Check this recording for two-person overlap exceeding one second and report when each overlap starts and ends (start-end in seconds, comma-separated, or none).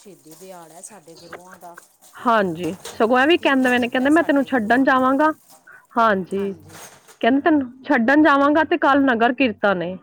3.4-5.0